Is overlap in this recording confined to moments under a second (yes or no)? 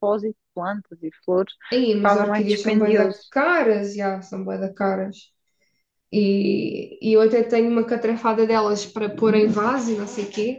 no